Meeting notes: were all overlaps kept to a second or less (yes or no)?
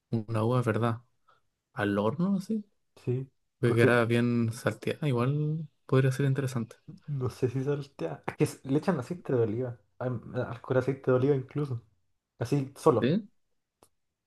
yes